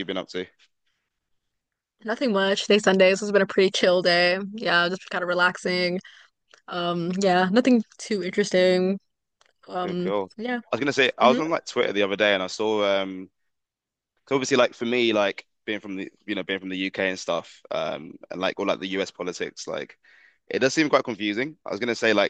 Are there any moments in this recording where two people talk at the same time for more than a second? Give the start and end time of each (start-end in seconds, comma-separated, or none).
none